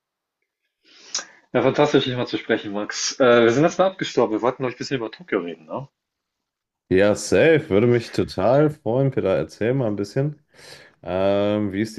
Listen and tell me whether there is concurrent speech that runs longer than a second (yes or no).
no